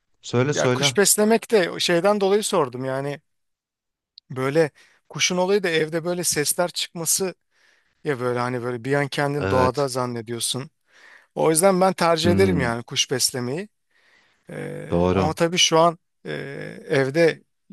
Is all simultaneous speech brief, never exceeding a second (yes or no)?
yes